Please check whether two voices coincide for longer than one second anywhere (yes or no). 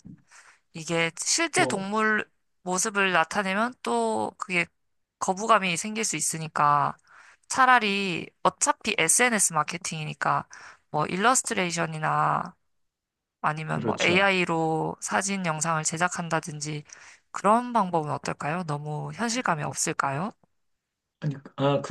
no